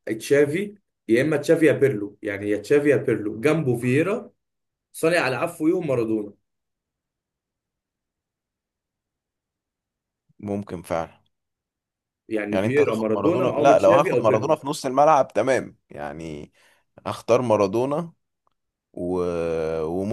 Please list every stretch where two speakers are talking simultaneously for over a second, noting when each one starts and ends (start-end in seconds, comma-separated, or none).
12.5-14.6